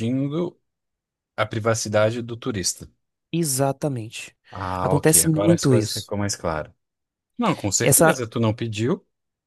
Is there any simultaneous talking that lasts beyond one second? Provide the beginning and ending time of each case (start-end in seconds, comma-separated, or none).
4.8-6.1